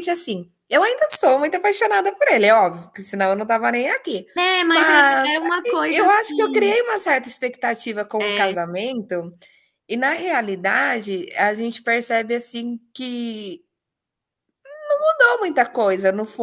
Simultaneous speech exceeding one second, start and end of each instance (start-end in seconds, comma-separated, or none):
4.7-6.8